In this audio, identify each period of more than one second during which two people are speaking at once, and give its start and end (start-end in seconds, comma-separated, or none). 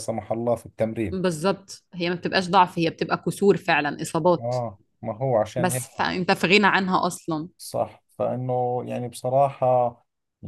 none